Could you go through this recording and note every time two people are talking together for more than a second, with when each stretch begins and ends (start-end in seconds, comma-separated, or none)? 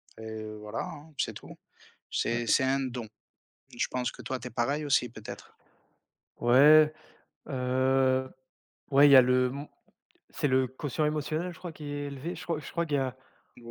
none